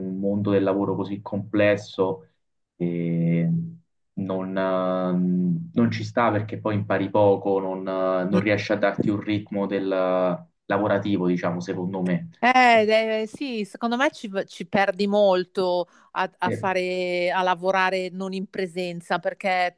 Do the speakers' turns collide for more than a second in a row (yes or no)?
no